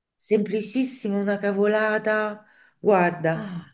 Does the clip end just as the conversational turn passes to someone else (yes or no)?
no